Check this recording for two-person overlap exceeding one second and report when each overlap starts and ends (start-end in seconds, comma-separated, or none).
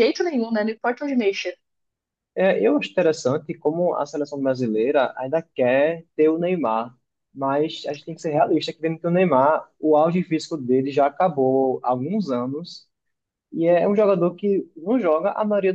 none